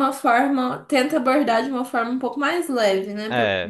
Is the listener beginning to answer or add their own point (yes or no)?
yes